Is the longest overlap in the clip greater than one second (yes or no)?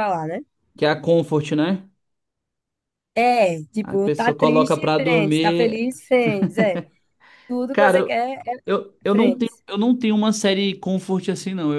yes